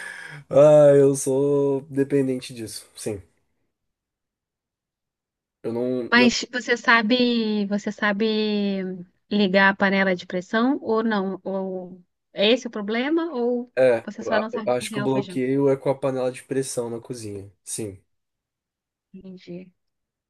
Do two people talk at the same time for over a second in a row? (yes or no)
yes